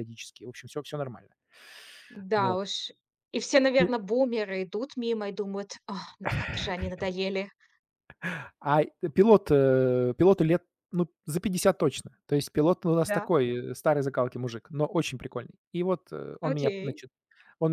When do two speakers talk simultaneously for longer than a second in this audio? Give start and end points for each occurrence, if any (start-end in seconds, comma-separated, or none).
none